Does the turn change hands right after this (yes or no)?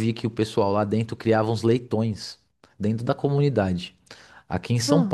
no